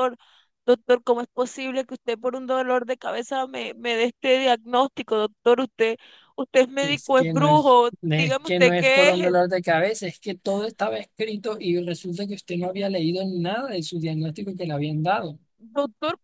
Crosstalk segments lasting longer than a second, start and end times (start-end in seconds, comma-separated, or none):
6.8-9.3